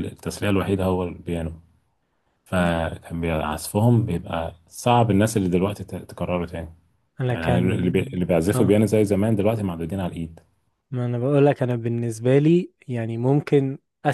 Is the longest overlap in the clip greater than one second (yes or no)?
yes